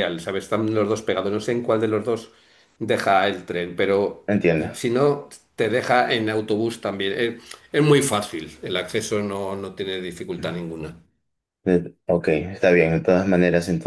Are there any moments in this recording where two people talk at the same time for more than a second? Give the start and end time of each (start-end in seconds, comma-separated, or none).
none